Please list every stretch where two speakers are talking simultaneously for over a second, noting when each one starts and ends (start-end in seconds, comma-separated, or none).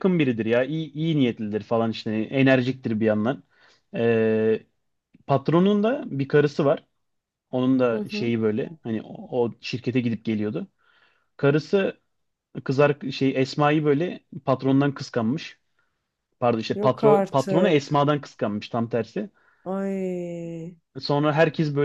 16.7-18.0